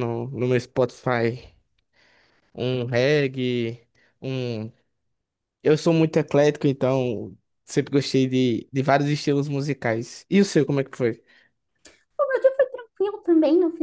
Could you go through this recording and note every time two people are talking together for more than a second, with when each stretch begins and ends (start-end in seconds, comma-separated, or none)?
none